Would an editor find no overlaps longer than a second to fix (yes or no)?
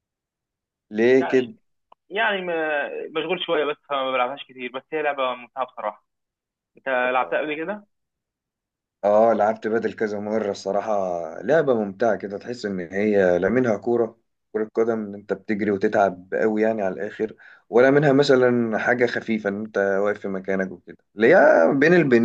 yes